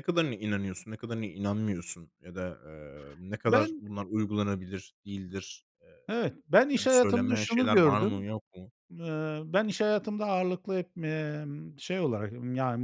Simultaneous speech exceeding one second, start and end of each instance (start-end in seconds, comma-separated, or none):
6.8-8.3